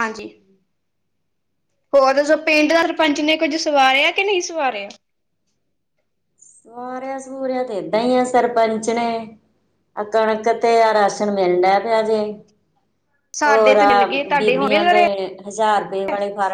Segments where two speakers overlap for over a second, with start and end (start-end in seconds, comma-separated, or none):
13.4-15.0